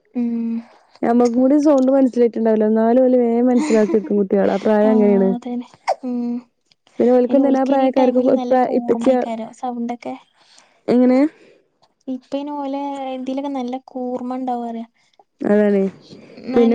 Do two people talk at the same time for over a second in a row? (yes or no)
yes